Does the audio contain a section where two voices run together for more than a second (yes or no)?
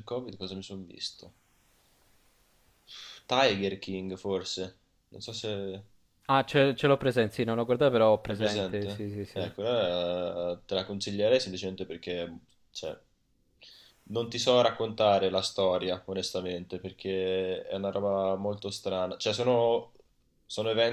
yes